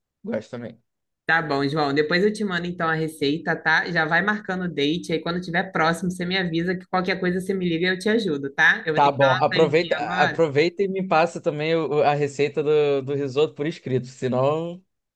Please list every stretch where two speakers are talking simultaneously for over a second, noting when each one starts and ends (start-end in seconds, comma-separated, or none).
8.9-10.5